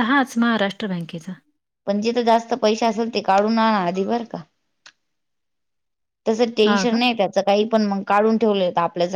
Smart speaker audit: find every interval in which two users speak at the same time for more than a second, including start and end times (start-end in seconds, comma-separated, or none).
none